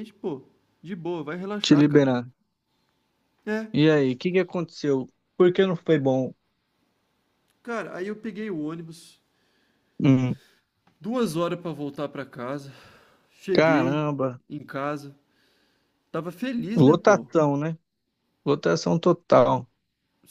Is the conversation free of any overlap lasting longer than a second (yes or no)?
yes